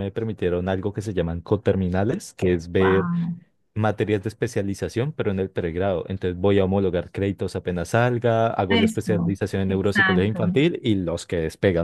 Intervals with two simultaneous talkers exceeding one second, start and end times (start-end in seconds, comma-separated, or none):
8.7-10.6